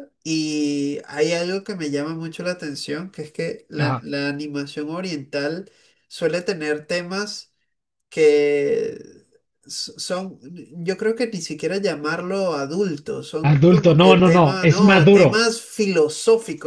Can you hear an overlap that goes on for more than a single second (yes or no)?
yes